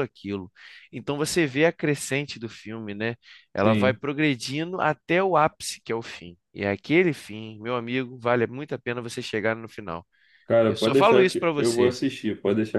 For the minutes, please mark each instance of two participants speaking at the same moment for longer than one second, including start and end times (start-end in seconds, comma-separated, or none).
10.6-12.0